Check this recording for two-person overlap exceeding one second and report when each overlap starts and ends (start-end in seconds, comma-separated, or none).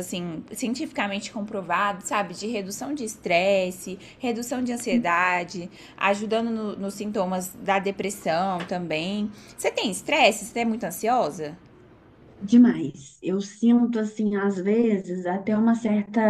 none